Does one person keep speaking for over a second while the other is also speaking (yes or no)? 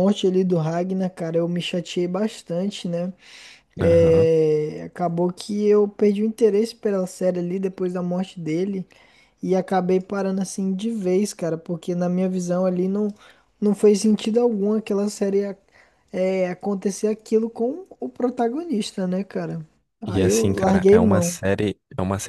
yes